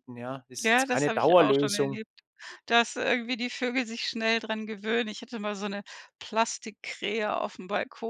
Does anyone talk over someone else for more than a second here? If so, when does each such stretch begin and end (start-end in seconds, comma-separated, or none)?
0.6-2.0